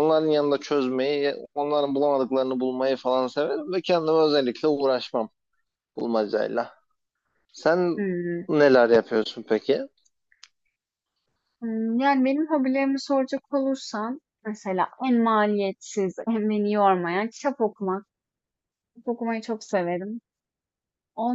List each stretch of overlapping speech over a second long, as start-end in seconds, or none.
none